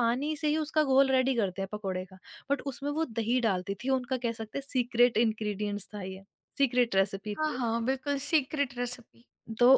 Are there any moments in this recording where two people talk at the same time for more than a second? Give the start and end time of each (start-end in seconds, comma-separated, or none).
none